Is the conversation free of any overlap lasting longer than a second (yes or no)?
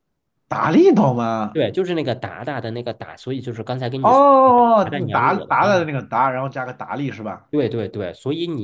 no